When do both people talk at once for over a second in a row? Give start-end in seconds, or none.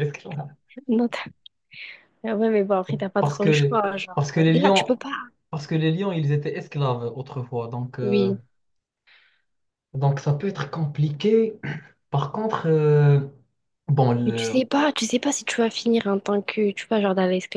3.2-4.9